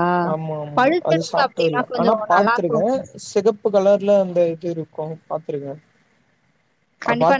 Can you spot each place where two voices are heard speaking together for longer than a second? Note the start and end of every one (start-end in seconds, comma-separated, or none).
0.8-2.8